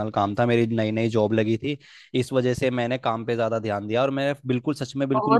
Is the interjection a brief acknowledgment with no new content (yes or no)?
no